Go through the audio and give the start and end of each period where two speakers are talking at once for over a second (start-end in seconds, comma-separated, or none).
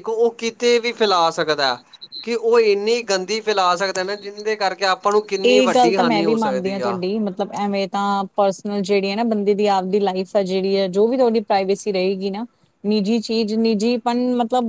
none